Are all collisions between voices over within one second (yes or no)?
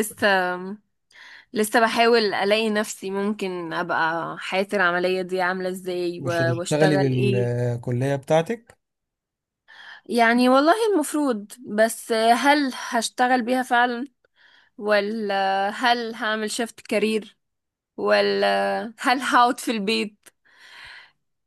no